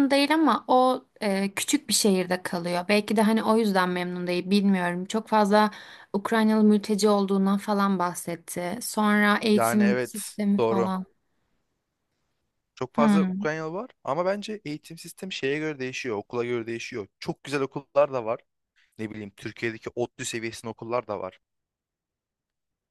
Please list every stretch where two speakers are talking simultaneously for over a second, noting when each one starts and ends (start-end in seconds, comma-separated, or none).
9.5-10.9